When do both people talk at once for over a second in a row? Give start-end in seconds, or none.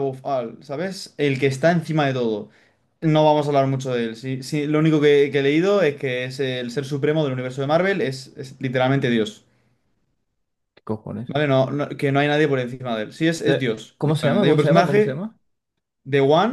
13.4-15.2